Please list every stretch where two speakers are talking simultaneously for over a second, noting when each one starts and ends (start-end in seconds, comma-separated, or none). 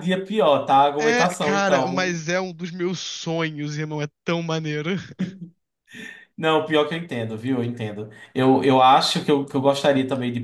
1.0-2.2